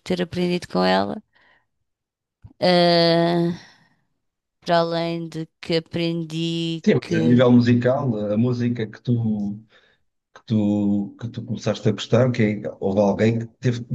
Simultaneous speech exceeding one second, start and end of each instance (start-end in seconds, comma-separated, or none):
none